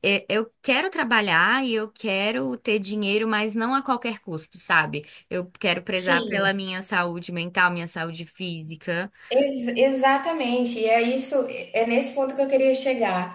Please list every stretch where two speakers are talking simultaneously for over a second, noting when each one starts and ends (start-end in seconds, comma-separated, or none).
none